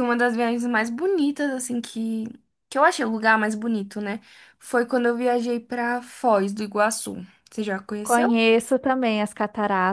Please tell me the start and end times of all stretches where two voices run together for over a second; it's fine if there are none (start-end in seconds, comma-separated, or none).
none